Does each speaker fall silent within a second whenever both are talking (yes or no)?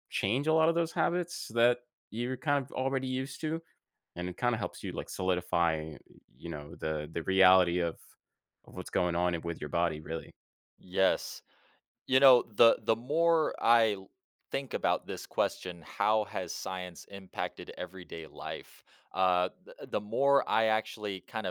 yes